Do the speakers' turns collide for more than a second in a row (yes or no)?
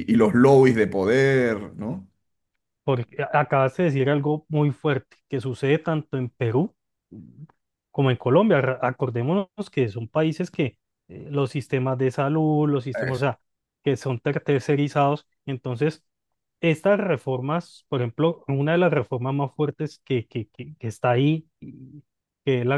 no